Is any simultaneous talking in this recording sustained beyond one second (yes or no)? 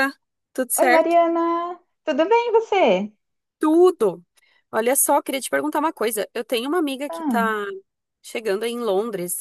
no